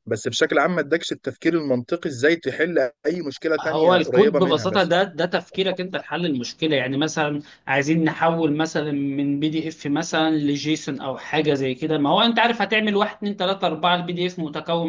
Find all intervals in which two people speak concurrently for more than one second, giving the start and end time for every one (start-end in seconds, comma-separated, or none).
3.6-4.9